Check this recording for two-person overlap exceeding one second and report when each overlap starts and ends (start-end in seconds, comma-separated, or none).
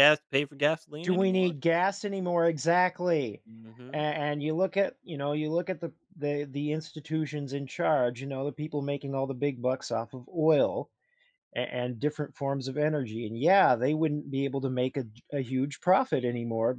none